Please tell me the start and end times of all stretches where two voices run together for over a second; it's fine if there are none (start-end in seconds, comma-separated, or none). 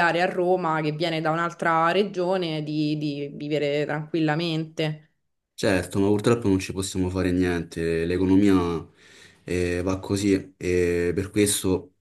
none